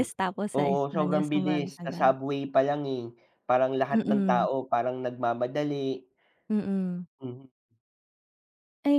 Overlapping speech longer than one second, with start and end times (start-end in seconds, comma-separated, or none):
0.6-2.1